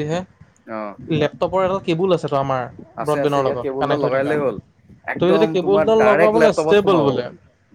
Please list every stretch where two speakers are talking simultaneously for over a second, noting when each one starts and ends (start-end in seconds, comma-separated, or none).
5.2-7.1